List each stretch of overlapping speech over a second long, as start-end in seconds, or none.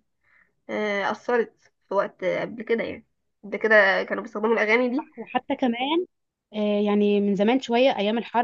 none